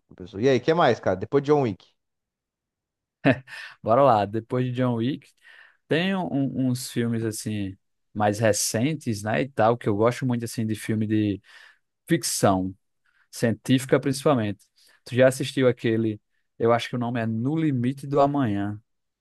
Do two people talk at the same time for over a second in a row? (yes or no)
no